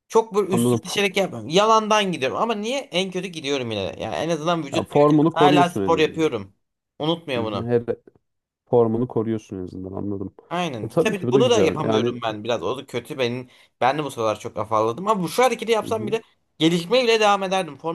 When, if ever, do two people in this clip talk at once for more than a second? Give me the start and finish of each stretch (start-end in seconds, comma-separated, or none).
4.7-6.3, 10.8-12.1